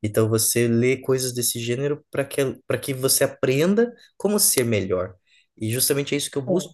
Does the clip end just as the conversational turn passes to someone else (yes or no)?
no